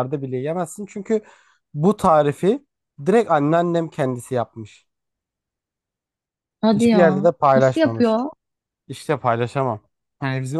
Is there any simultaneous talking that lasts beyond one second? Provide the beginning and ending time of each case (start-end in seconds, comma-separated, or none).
6.7-8.2